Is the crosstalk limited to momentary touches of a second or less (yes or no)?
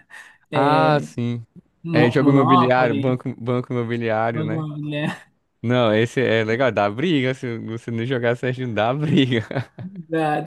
no